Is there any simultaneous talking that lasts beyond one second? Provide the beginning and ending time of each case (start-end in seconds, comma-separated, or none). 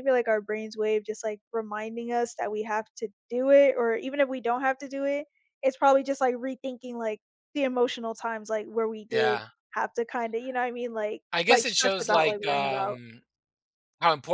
11.3-13.0